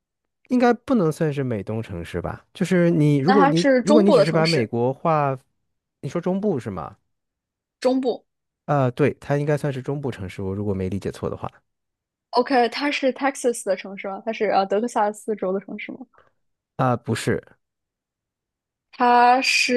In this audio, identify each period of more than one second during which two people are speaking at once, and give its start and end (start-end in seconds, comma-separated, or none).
3.2-4.7